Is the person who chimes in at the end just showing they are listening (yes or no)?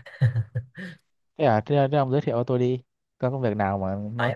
no